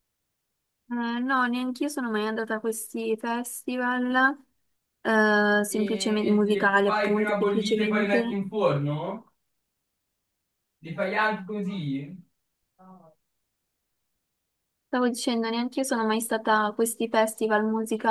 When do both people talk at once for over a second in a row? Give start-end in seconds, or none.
5.7-8.4